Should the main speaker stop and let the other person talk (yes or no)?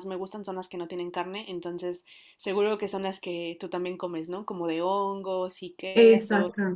yes